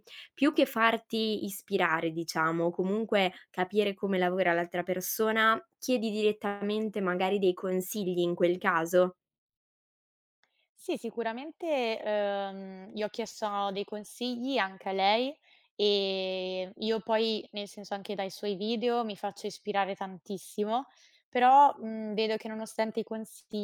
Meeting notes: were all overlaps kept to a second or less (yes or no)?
yes